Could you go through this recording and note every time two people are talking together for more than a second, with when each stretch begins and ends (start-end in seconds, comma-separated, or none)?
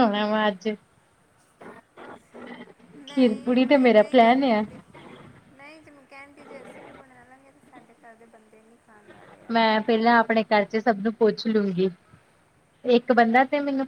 3.1-4.6